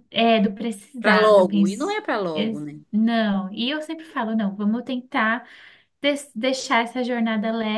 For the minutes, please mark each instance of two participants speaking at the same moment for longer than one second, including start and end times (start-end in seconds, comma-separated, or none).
1.0-2.8